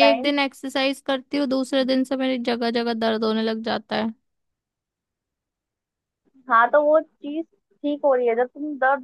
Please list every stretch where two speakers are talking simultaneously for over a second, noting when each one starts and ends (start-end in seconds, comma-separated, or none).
none